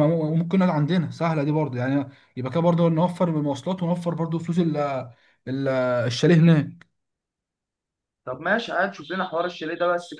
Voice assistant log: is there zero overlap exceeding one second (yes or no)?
yes